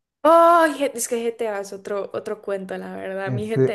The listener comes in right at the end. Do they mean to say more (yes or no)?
yes